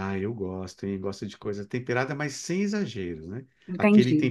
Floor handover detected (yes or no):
no